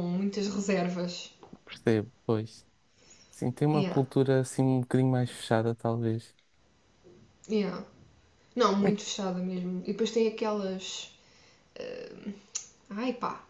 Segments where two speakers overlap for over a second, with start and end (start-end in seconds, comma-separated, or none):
none